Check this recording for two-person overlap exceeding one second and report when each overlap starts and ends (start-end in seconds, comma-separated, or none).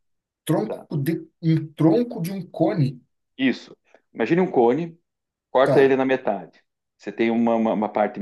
none